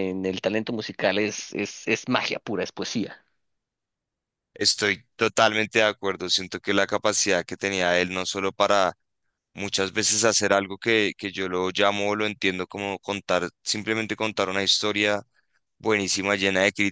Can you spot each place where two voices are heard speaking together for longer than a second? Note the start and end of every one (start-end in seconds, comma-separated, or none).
none